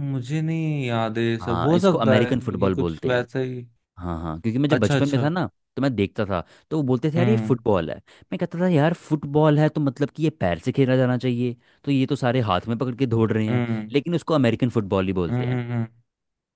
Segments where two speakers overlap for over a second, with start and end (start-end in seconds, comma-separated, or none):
1.4-3.3